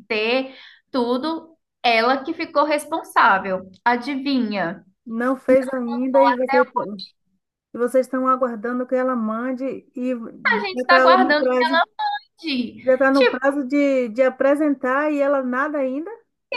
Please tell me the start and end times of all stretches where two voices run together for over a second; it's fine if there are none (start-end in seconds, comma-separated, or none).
10.4-11.7